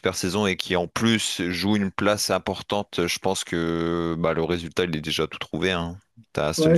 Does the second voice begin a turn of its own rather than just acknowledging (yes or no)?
yes